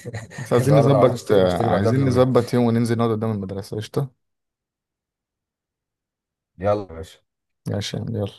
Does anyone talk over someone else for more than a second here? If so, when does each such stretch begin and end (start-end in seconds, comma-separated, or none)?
0.6-2.2